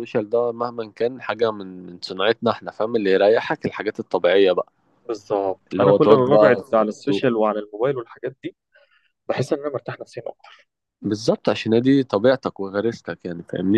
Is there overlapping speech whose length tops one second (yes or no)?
yes